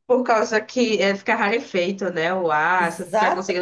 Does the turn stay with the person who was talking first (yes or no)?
no